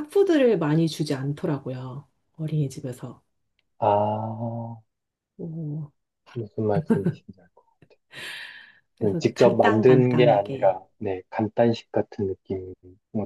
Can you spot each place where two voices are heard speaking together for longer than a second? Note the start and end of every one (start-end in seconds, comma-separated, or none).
9.0-10.8